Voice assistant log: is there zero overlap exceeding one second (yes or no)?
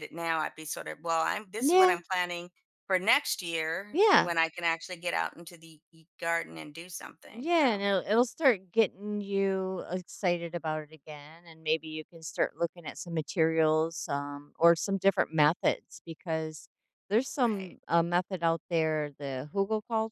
yes